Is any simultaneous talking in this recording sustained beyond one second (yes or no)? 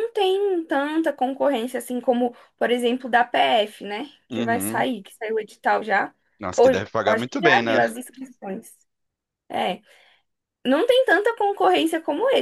yes